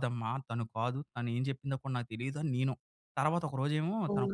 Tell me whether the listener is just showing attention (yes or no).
yes